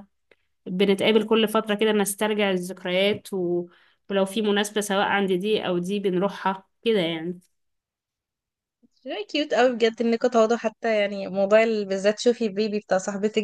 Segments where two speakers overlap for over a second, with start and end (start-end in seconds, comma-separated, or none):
none